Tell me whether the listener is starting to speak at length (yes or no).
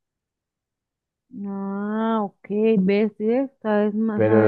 yes